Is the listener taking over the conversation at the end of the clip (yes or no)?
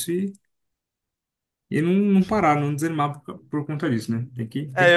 yes